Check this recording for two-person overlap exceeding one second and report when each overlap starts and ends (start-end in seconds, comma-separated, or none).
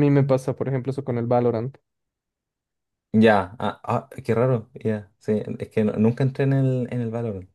none